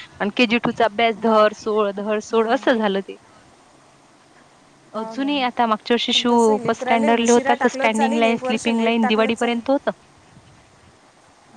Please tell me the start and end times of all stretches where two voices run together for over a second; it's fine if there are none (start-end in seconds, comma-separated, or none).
6.1-9.6